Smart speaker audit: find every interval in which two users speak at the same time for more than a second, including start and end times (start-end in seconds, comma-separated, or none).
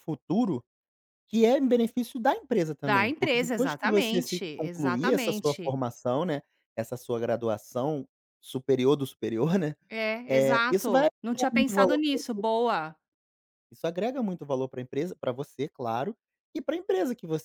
2.8-5.8, 10.3-12.0